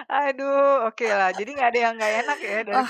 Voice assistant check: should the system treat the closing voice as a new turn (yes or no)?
yes